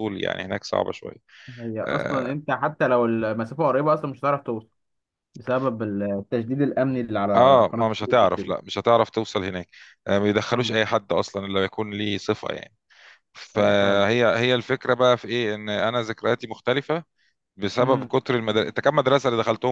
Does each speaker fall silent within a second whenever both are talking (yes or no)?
no